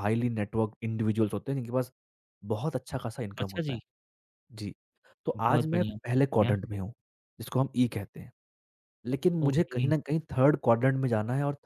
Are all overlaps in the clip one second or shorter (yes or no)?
no